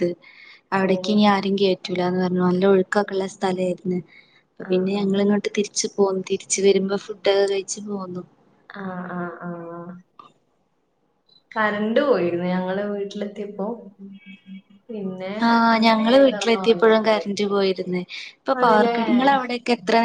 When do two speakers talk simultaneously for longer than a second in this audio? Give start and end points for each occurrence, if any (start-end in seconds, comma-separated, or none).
15.8-17.3